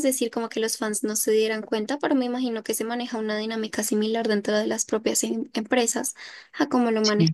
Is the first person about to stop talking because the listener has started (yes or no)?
no